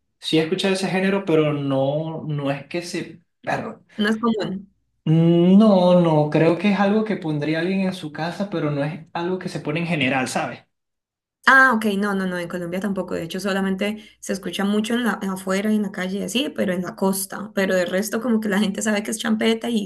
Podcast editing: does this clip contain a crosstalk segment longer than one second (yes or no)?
no